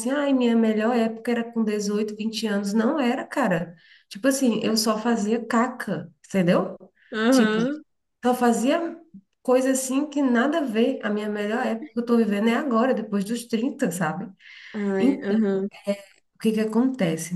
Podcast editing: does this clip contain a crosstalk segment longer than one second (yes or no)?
no